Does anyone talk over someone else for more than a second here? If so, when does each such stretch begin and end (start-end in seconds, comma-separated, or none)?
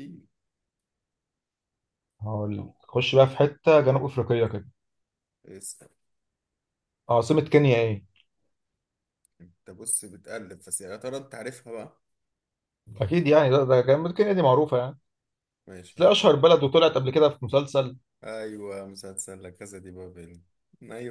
none